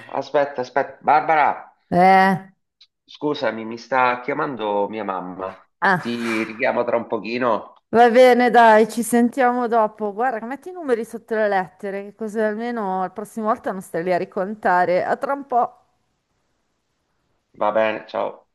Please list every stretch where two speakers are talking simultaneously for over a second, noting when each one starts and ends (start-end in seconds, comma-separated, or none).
none